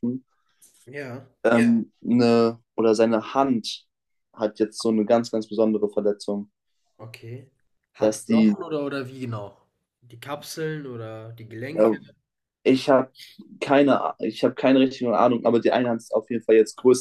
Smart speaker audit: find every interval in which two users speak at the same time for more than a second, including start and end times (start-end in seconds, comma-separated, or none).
none